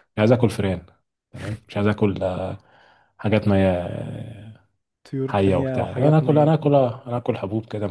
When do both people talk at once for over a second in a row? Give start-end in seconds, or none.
5.3-6.7